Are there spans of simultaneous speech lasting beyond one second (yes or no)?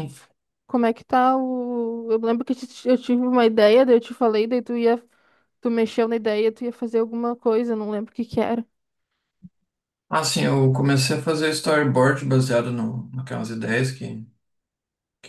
no